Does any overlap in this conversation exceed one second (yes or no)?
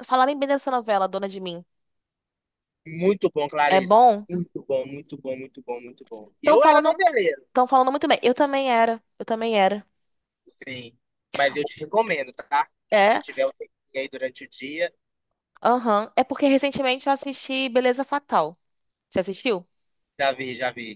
no